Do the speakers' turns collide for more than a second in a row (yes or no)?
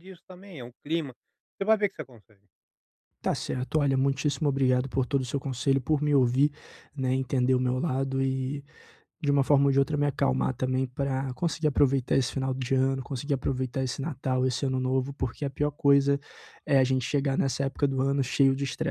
no